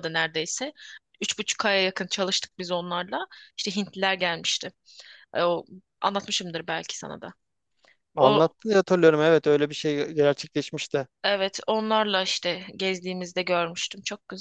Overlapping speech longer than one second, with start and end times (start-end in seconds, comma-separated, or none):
none